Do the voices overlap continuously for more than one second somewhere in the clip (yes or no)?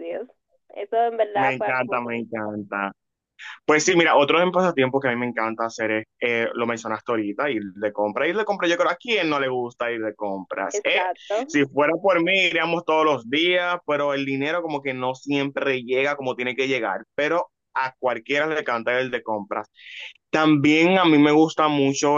yes